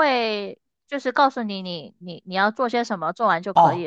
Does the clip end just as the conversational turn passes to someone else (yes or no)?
yes